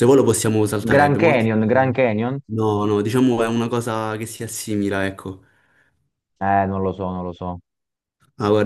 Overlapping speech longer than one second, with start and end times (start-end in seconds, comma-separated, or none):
none